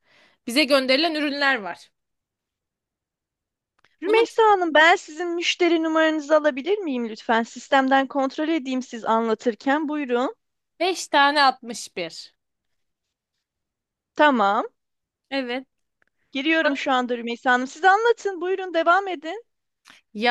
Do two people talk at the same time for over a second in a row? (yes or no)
no